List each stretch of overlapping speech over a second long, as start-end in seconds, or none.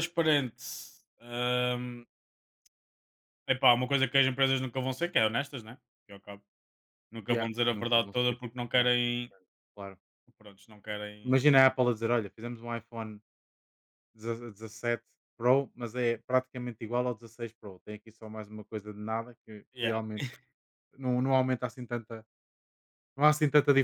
7.3-9.1